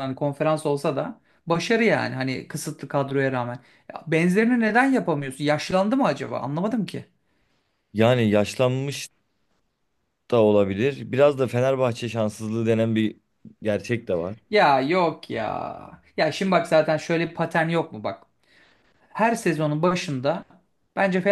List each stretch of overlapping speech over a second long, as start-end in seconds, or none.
none